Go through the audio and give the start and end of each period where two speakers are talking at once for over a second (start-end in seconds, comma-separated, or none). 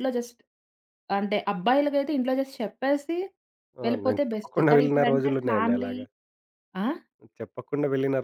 3.9-5.9